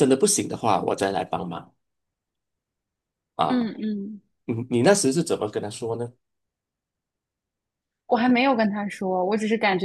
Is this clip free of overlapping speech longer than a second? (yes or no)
yes